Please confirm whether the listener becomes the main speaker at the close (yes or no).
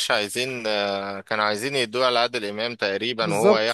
yes